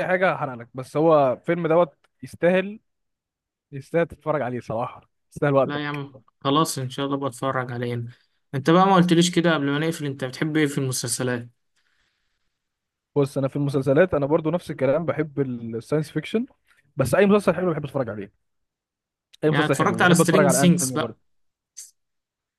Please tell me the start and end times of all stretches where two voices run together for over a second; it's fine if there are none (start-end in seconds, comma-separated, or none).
19.5-21.2